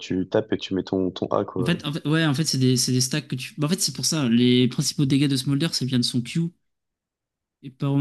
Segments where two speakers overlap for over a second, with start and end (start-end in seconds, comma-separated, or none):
none